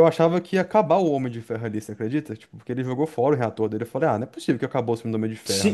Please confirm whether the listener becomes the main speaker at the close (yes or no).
yes